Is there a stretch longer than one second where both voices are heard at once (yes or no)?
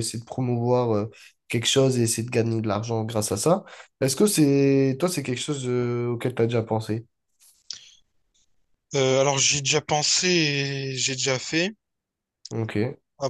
no